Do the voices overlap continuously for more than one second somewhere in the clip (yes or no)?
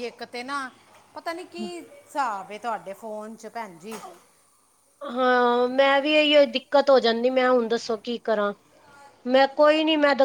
no